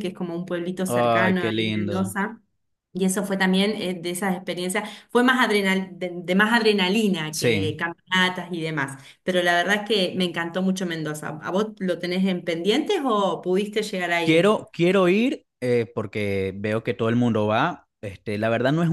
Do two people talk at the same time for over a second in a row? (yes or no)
yes